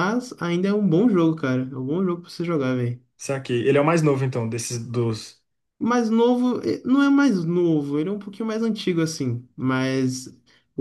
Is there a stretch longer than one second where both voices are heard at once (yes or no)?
no